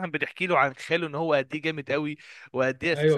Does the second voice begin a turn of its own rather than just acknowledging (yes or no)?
no